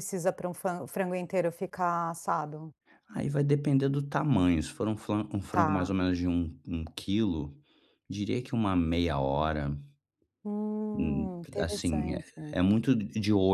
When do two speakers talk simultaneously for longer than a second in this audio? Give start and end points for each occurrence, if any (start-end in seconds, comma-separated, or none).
10.9-12.6